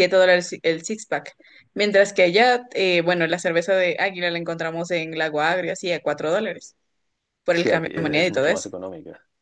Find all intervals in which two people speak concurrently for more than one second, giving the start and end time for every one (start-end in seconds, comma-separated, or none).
7.5-8.7